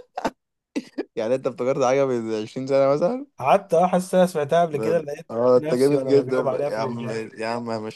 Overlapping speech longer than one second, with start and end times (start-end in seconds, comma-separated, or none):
4.7-7.2